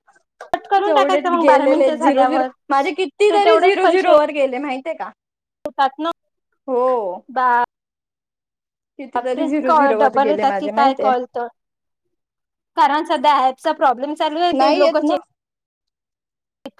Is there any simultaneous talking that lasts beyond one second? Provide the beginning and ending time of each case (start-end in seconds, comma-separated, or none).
0.9-2.5, 9.2-11.1